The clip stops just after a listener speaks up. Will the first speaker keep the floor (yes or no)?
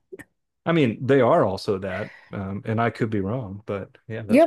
no